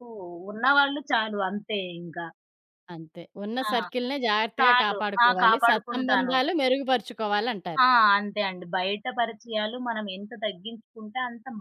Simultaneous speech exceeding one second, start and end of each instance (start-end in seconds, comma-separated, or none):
4.6-6.3